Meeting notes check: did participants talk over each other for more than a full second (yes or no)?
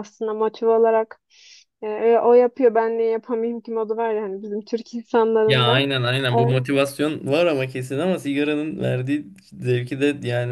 no